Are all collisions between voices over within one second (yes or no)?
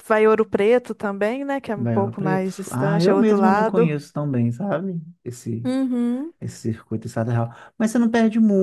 no